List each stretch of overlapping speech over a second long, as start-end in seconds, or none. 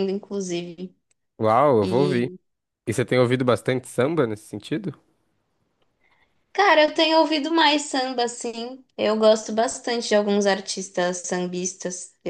none